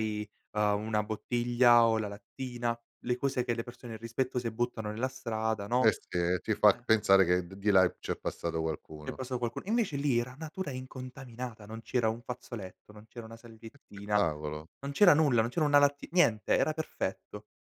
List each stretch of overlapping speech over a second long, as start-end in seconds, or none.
none